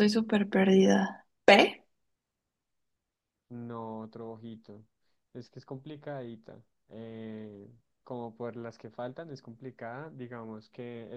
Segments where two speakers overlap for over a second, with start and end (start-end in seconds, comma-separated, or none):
none